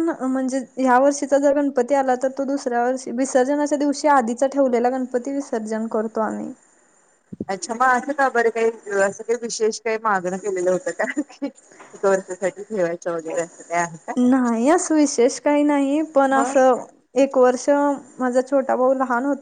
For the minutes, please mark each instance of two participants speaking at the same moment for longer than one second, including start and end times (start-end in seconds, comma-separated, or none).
none